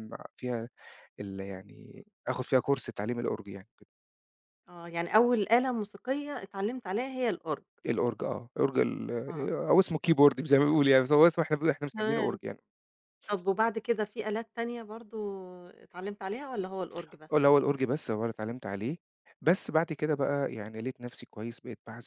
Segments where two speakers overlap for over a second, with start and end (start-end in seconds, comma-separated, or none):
none